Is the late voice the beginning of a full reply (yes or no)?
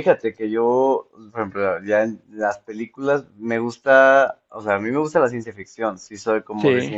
no